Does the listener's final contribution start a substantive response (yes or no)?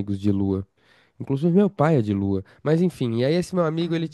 no